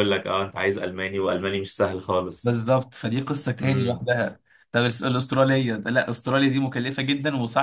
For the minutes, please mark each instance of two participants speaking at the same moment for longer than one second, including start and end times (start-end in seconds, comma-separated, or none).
none